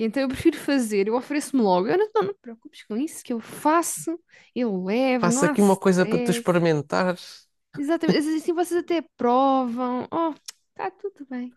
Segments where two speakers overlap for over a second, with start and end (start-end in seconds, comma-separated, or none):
5.2-6.6